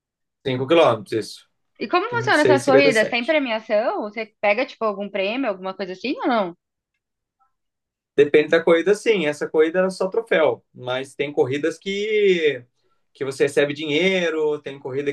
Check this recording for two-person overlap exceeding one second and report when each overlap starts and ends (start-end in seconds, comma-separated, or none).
2.1-3.4